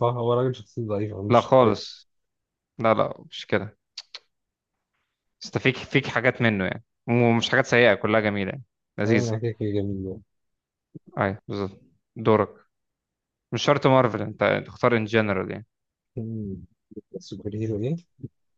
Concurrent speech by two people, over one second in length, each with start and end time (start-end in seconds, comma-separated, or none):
none